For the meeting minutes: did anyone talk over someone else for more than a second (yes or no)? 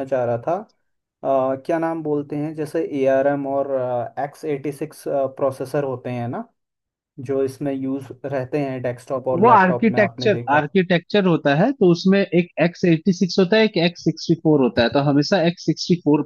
yes